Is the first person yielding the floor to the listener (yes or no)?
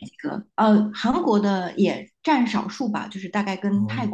no